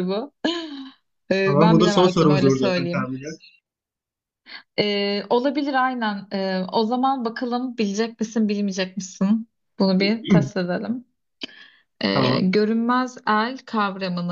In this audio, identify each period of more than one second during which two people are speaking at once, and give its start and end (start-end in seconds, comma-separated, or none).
1.4-3.1